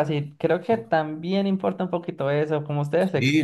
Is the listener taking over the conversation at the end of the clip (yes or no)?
yes